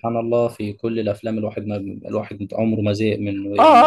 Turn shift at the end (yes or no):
yes